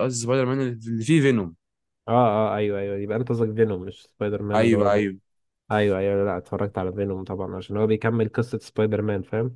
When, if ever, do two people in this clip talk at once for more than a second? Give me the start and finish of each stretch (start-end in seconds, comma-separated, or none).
none